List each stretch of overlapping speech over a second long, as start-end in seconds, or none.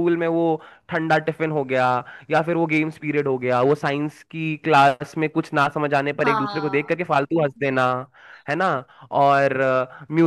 6.2-7.9